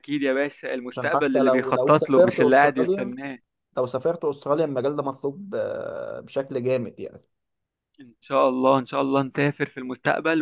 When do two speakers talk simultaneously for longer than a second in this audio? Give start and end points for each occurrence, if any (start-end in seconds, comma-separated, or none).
0.9-3.1